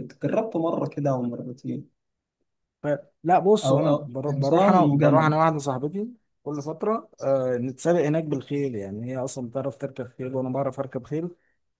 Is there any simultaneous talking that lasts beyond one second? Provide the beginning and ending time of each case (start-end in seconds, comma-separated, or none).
3.6-5.3